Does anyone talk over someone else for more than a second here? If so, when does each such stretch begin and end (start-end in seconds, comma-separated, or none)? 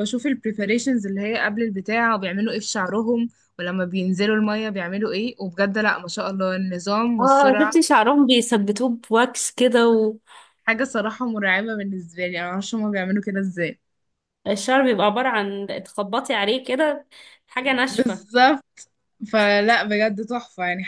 none